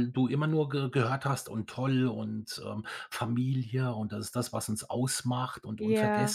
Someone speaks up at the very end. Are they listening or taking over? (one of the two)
listening